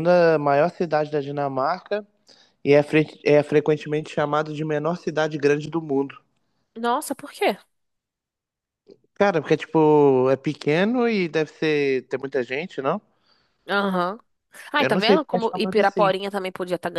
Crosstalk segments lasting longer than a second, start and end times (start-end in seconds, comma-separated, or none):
14.8-16.1